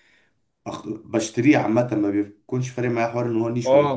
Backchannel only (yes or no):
no